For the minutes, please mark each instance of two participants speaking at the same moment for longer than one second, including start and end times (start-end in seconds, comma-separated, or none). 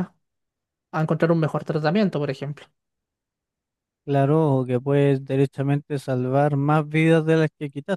none